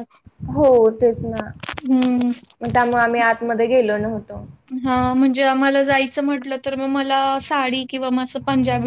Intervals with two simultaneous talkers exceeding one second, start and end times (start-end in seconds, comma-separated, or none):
none